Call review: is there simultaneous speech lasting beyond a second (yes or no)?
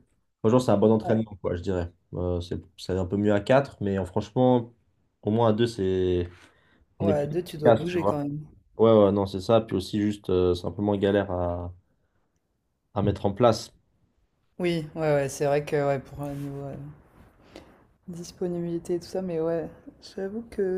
yes